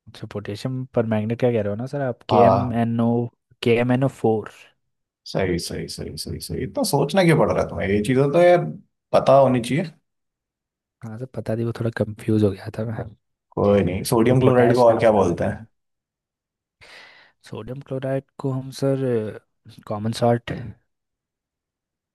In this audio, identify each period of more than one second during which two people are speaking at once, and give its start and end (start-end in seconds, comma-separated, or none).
14.3-15.6